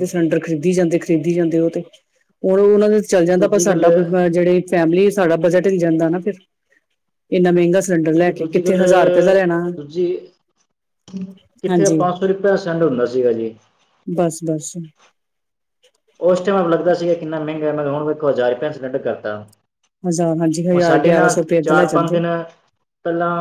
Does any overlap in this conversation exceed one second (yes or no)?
yes